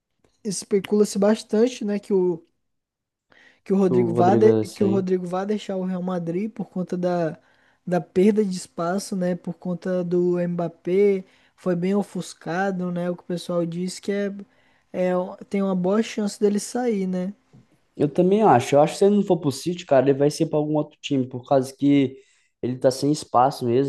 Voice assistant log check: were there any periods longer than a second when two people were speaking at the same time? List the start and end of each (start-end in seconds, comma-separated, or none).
3.9-5.1